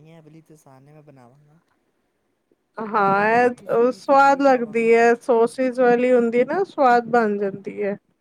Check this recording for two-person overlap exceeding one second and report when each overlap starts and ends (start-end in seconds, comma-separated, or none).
3.0-4.9